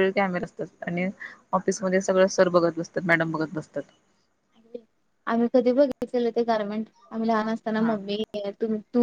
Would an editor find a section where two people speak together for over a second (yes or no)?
no